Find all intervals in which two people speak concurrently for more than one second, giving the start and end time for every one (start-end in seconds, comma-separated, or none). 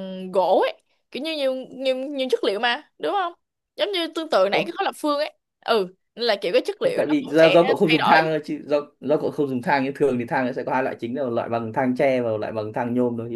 6.8-8.3